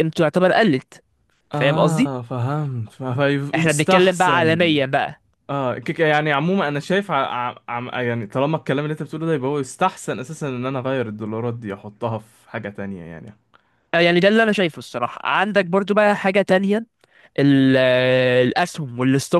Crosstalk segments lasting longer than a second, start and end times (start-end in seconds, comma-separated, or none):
3.5-4.8